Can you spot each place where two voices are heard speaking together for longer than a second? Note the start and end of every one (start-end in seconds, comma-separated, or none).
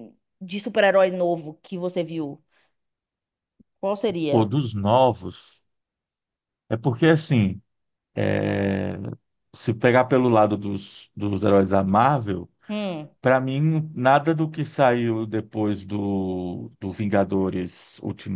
none